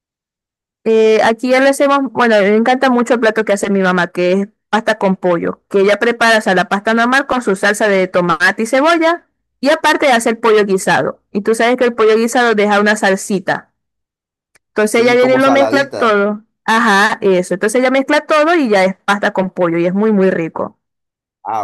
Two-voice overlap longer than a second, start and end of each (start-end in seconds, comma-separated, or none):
14.8-16.2